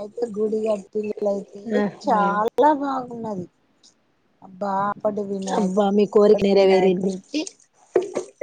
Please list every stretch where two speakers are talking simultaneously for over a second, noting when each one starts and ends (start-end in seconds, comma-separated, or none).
5.6-7.1